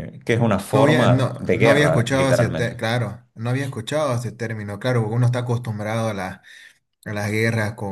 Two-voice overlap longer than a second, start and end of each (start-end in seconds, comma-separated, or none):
0.7-2.8